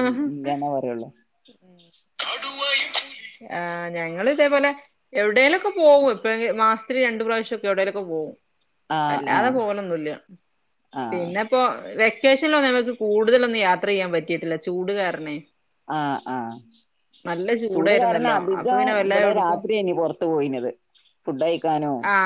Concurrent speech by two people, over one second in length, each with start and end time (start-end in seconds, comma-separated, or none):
17.7-19.6